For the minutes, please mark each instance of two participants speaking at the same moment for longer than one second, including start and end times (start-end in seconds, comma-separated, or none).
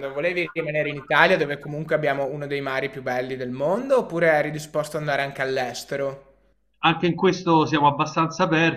none